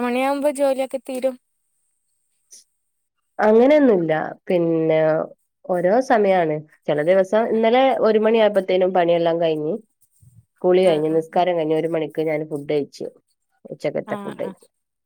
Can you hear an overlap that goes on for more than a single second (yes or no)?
no